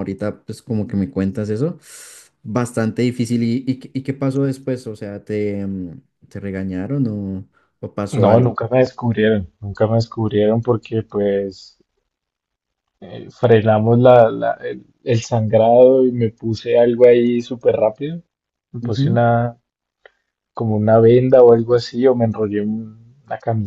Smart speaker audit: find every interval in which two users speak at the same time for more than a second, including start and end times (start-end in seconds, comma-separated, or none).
none